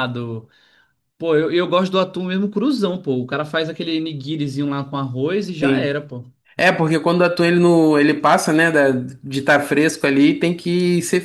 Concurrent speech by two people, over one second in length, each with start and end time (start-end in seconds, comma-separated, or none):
none